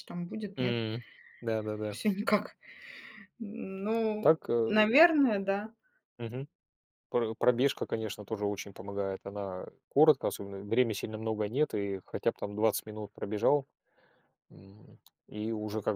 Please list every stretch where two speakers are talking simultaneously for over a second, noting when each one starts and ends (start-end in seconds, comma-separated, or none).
none